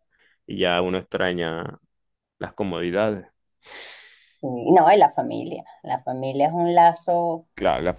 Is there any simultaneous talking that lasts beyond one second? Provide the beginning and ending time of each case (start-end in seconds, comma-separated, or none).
none